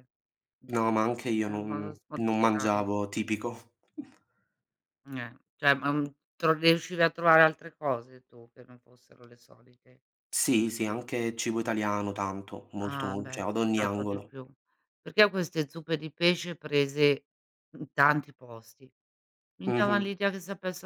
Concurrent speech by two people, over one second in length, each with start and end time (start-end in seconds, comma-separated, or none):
1.4-2.8, 12.8-14.3